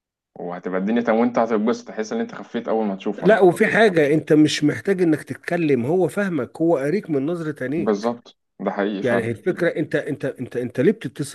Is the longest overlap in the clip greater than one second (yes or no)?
no